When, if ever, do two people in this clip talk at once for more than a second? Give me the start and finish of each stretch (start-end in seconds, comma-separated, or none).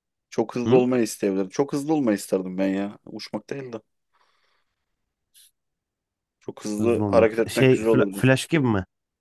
6.8-8.3